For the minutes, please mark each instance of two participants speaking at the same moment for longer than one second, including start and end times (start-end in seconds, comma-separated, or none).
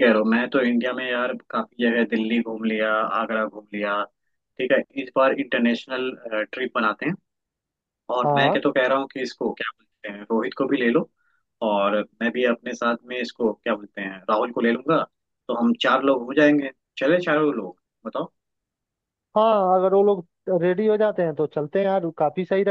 none